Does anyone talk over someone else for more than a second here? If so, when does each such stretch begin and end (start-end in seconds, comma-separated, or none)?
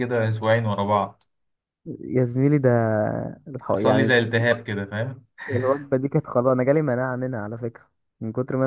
none